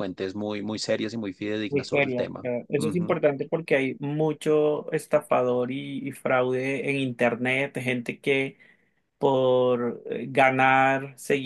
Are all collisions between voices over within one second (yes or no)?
no